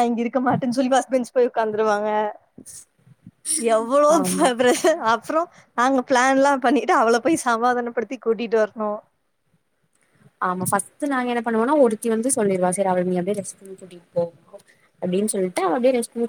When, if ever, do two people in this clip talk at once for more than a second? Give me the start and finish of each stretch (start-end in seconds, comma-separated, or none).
none